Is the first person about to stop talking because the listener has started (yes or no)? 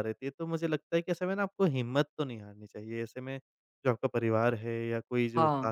no